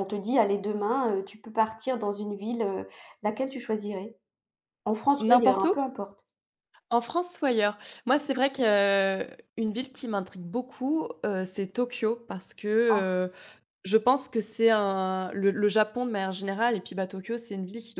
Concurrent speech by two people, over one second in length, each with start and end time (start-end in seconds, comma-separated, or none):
none